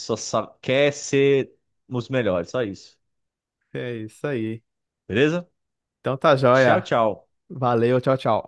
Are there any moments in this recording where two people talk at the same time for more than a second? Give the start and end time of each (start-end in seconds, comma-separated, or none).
none